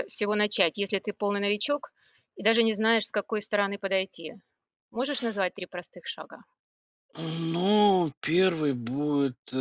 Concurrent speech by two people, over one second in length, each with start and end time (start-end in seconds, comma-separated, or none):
none